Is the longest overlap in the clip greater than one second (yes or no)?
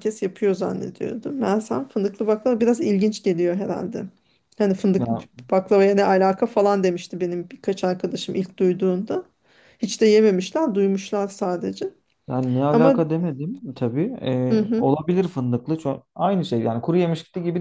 no